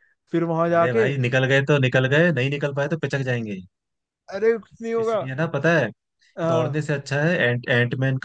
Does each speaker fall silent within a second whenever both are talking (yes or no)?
yes